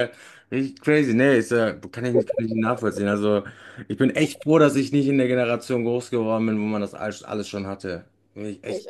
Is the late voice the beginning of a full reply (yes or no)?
yes